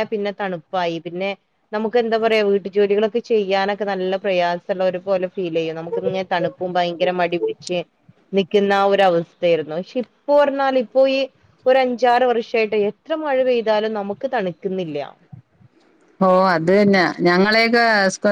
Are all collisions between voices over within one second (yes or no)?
yes